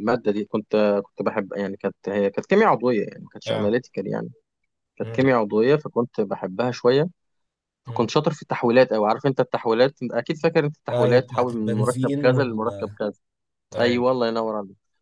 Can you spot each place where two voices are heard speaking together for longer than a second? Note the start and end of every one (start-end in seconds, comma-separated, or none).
10.9-12.6